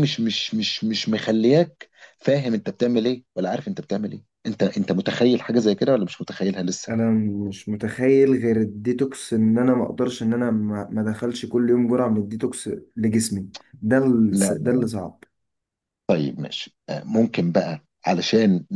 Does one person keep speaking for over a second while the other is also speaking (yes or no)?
no